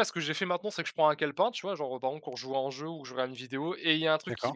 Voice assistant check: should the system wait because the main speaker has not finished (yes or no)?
yes